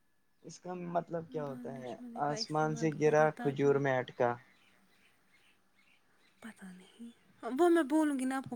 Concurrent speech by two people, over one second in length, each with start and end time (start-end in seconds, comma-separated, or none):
1.5-3.7